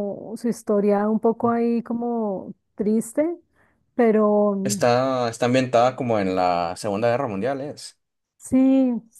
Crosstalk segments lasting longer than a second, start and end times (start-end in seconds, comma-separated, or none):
none